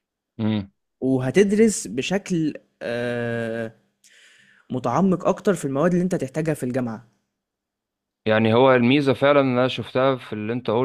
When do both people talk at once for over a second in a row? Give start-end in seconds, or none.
none